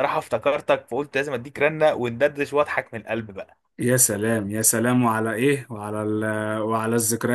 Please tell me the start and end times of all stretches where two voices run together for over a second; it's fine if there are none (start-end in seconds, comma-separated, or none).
none